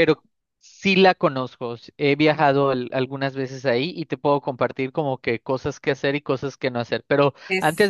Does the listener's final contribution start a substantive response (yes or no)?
no